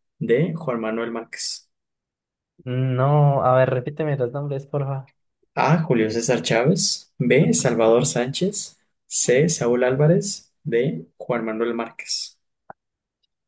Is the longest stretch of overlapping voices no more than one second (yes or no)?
yes